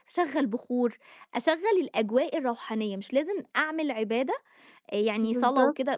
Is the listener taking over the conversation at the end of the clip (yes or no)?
no